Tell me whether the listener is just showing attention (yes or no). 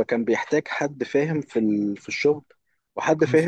yes